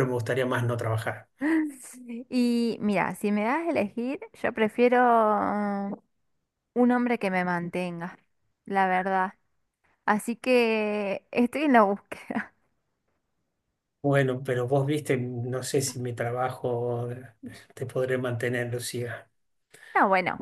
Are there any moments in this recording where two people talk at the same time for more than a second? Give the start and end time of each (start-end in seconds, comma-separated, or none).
none